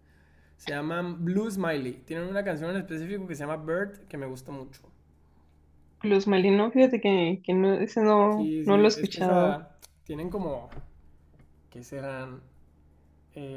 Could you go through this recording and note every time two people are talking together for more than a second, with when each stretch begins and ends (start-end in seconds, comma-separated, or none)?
8.3-9.6